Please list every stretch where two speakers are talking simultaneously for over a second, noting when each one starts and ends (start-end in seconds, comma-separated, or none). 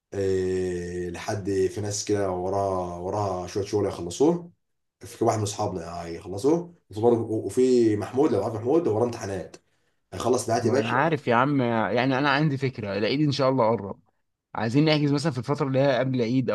none